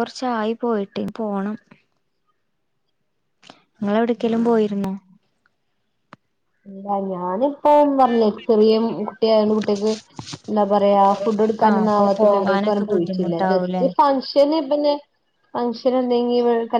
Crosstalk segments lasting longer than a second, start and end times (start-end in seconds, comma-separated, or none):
11.7-13.8